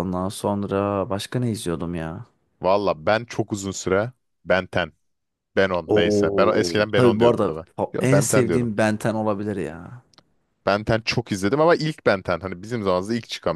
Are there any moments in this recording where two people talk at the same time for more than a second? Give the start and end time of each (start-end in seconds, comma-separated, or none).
5.9-8.7